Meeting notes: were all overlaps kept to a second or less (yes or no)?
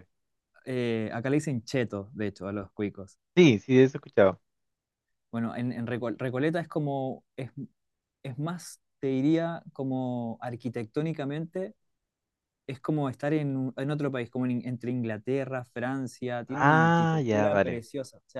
no